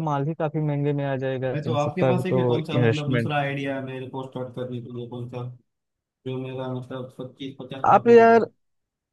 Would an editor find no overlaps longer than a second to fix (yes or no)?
no